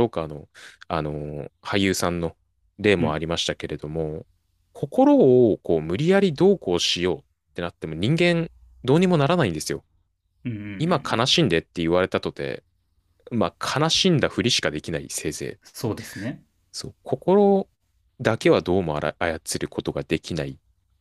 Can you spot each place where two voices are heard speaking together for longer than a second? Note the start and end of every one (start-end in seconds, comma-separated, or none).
none